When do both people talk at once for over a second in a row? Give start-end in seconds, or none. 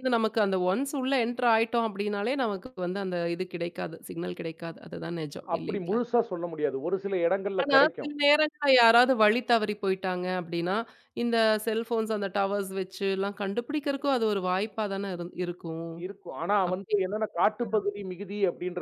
none